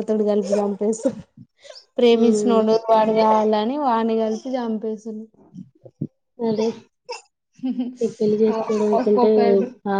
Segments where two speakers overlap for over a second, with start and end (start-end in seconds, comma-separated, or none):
none